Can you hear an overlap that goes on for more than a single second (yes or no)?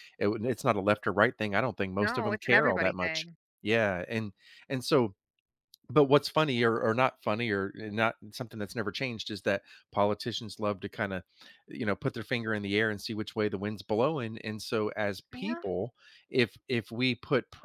yes